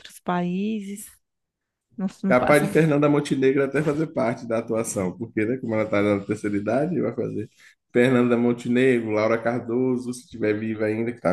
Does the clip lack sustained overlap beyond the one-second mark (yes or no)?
yes